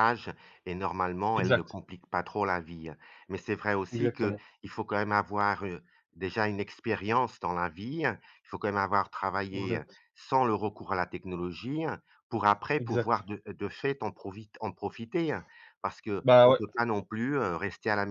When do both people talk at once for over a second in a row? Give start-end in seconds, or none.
none